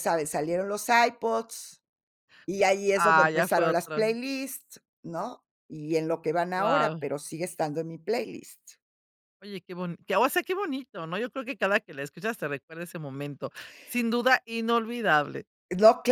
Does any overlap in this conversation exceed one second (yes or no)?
yes